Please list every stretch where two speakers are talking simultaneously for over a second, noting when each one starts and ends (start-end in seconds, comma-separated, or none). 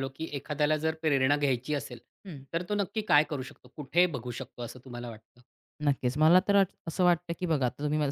none